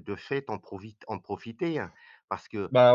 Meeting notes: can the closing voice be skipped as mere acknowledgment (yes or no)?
yes